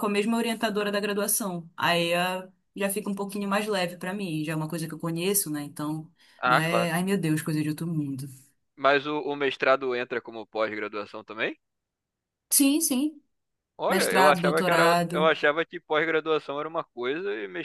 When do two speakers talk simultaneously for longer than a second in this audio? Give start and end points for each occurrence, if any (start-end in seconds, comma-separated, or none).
13.9-15.3